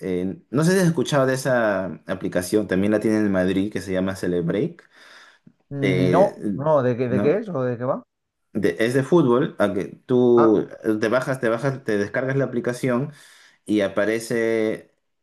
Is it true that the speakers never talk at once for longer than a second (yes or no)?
yes